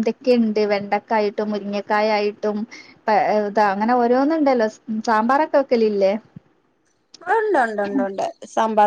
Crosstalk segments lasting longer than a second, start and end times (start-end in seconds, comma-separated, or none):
none